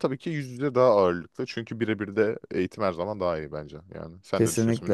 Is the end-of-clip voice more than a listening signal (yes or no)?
yes